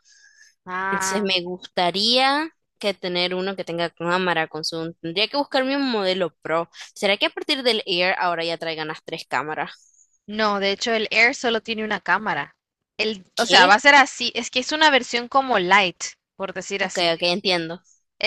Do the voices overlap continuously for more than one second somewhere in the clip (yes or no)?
no